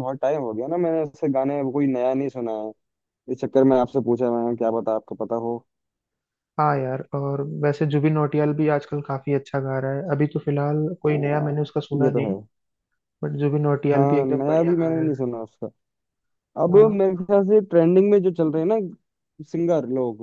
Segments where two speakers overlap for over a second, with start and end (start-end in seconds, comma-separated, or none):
13.9-15.2